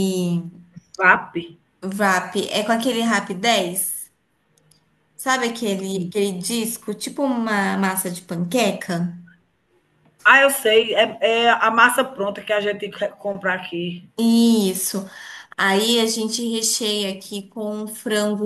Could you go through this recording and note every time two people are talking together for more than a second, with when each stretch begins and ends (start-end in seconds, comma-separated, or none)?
none